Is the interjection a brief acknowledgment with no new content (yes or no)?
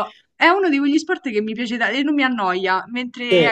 yes